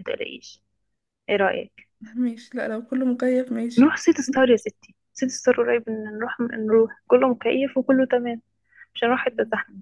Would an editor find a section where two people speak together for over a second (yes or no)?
no